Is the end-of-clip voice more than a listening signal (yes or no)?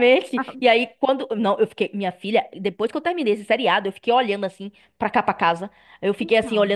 no